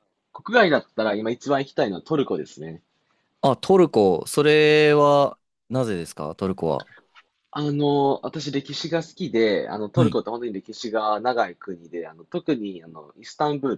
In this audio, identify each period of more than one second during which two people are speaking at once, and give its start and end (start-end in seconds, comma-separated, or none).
none